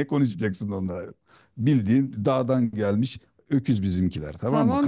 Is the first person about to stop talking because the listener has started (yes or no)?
yes